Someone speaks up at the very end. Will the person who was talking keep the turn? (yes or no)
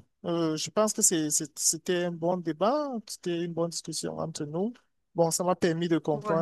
yes